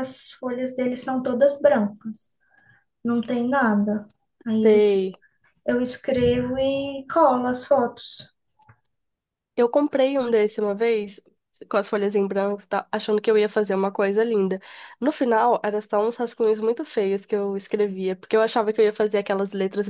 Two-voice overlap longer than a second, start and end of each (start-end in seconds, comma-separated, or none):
none